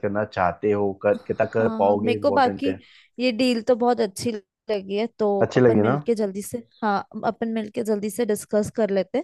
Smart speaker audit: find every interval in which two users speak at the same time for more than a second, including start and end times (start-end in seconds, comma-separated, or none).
1.1-2.8